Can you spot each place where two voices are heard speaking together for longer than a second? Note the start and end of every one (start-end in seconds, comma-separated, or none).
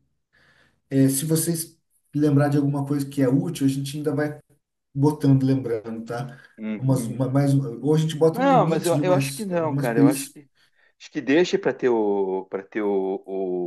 8.3-10.4